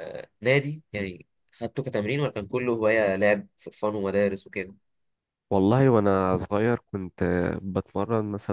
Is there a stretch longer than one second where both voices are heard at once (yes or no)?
no